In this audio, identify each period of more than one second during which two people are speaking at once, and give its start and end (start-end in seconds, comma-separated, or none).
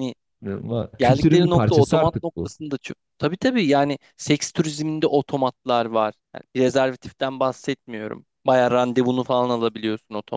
1.0-2.5